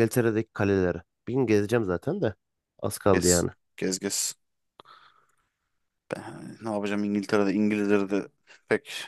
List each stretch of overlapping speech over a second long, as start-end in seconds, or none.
none